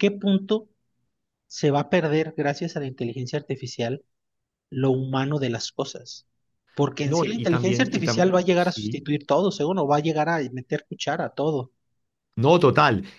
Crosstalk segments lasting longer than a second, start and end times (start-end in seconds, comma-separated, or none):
7.0-9.0